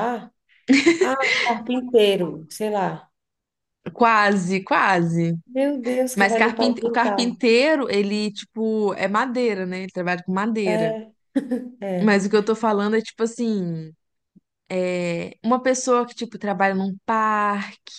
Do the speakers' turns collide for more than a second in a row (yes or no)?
yes